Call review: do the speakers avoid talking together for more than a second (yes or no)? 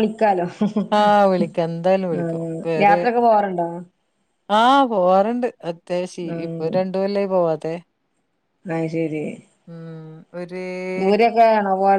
yes